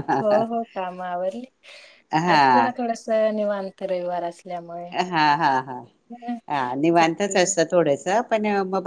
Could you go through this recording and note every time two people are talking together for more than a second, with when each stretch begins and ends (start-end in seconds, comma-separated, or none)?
none